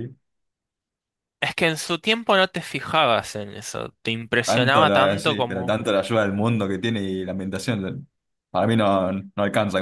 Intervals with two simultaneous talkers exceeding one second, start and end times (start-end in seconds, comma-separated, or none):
4.4-5.8